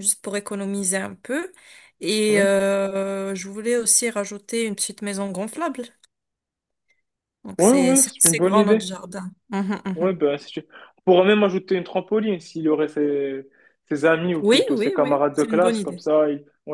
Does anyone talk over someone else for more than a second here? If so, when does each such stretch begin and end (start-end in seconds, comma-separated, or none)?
7.6-8.9, 14.4-16.0